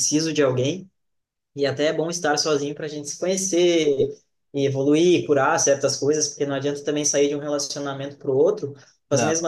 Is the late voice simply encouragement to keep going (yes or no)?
yes